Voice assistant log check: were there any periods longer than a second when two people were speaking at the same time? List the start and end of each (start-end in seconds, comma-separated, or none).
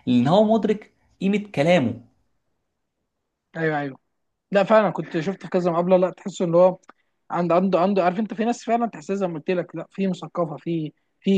none